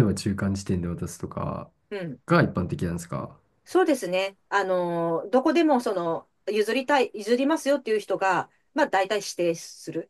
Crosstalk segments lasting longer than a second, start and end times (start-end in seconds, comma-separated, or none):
none